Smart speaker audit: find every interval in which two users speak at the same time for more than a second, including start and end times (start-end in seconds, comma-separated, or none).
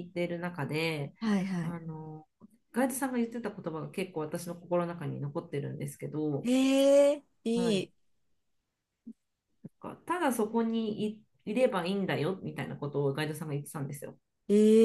none